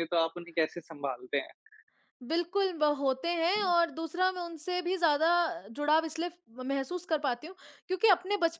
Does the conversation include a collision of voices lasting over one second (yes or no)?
no